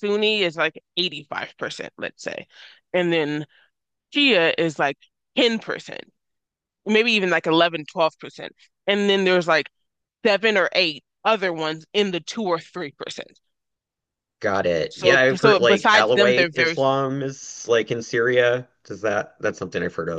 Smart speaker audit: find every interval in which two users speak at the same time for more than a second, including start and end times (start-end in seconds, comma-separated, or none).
14.9-16.8